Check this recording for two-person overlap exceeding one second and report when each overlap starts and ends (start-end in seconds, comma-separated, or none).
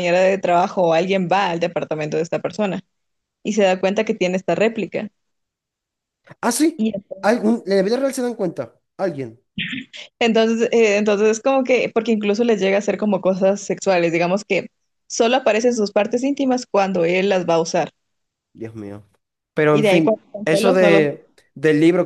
19.7-21.0